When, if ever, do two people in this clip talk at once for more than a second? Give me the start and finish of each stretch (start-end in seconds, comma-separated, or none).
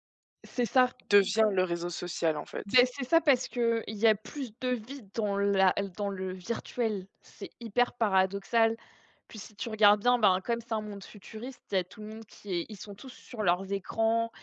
none